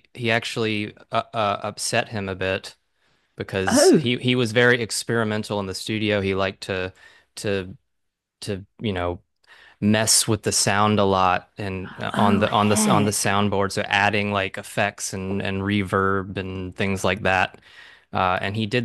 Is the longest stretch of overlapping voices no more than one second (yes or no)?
no